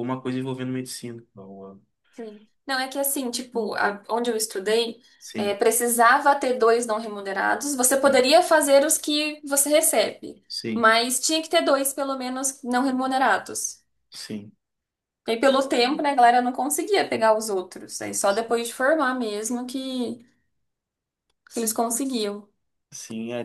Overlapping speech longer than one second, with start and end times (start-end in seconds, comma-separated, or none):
none